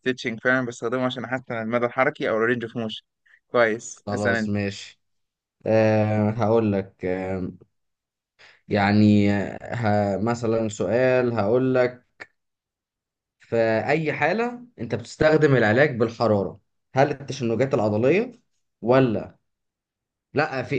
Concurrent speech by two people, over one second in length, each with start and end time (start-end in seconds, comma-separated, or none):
none